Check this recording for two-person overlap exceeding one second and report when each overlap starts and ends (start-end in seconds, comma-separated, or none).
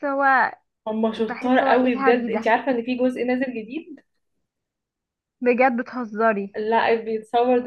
1.2-2.5